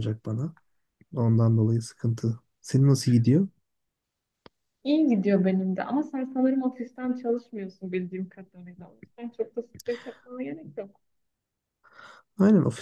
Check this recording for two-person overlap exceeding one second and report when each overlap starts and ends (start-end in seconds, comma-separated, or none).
none